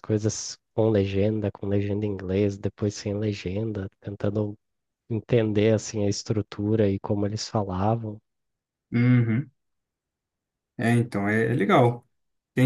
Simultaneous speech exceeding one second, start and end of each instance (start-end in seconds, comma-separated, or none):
none